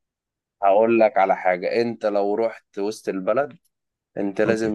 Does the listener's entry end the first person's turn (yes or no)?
no